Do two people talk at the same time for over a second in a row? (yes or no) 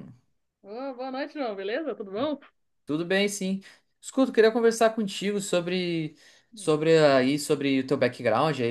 no